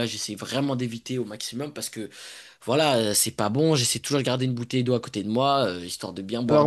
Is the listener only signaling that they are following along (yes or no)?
no